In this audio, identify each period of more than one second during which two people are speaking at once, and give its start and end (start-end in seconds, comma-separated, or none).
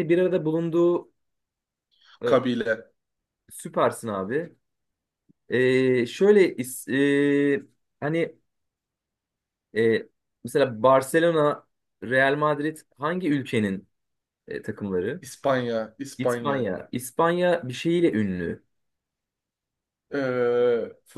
none